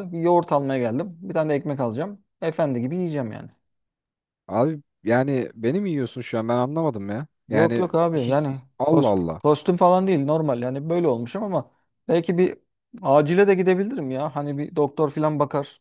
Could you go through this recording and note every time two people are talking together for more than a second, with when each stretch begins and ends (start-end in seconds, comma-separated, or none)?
7.5-9.4